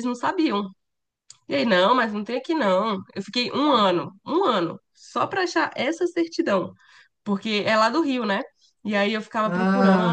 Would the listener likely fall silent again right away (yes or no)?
yes